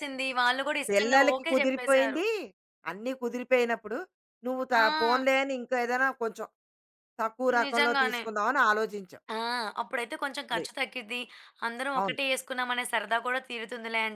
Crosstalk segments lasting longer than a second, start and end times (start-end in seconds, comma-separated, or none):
0.9-2.2